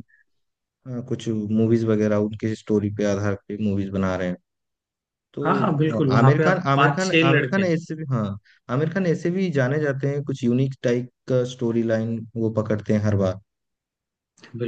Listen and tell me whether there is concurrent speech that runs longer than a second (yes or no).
yes